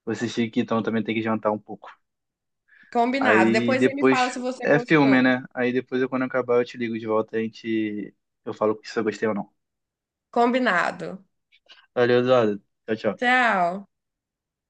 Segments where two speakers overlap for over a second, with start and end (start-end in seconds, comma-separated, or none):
3.2-5.4